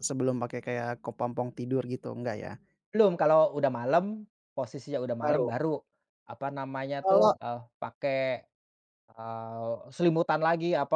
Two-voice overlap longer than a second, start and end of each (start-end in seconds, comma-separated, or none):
none